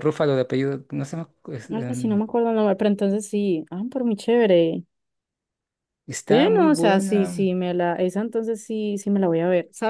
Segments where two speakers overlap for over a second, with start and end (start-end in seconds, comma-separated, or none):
6.3-7.5